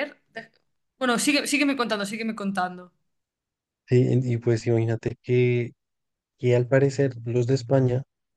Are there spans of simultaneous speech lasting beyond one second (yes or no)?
no